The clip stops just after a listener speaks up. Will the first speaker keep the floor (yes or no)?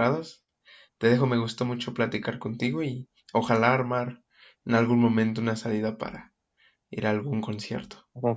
no